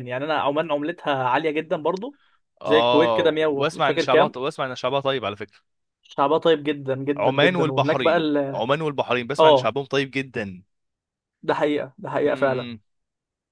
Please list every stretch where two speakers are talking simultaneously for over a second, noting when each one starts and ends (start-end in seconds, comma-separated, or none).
2.6-4.4, 7.2-8.6